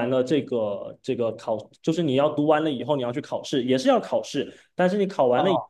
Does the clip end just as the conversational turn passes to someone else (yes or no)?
no